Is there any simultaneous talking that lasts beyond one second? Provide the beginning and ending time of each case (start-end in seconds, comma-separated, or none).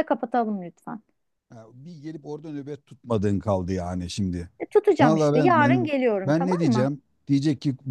5.0-6.9